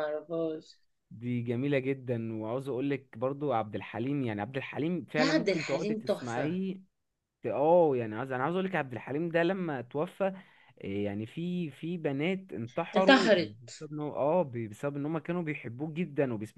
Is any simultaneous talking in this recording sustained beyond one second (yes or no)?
yes